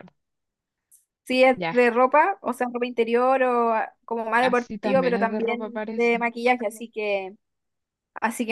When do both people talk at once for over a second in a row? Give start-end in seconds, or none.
4.4-6.3